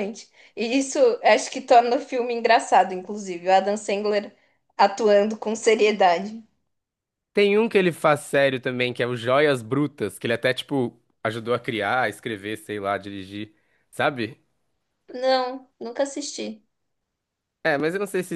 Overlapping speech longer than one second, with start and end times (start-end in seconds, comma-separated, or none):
none